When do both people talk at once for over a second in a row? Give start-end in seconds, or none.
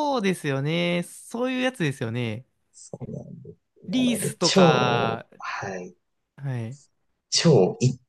3.9-5.3